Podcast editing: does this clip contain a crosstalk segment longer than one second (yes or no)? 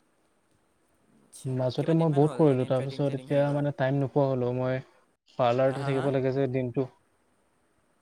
yes